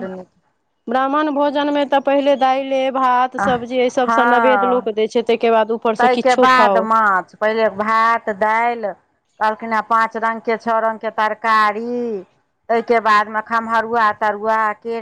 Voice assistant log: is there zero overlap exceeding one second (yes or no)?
yes